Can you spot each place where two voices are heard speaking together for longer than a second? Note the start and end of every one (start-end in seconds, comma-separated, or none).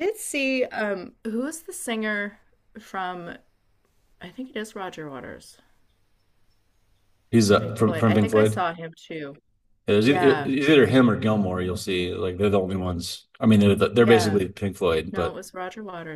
7.4-8.6